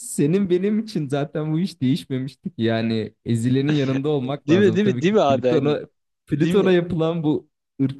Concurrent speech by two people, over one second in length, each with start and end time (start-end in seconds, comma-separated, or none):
4.5-5.8